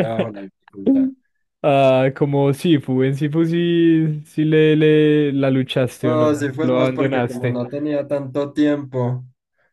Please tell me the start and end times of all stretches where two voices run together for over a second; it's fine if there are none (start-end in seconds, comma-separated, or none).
6.0-7.6